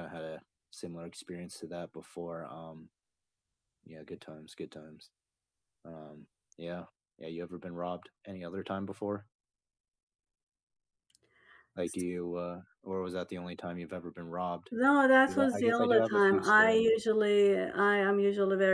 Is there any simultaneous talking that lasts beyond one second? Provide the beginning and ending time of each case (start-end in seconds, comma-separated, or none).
15.3-17.0